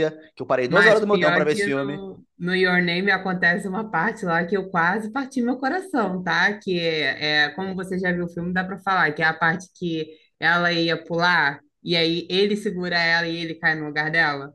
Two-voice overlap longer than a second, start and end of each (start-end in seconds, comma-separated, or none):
0.7-2.0